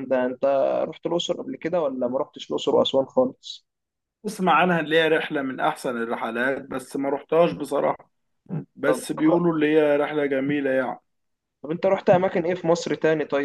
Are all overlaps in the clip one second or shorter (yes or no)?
yes